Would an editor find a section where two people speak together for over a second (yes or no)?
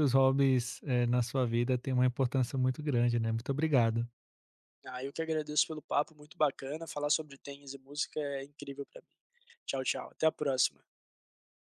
no